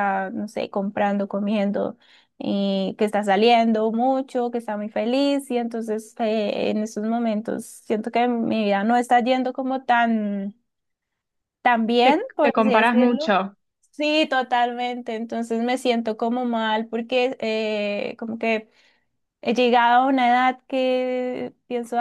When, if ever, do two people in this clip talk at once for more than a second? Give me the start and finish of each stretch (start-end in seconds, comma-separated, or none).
12.0-13.3